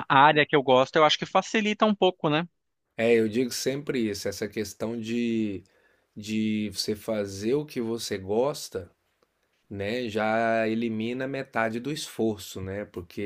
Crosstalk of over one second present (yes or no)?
no